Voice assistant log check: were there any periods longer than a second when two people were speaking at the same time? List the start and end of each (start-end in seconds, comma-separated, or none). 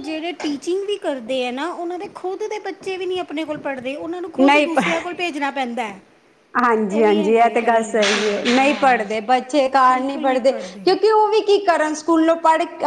7.0-8.9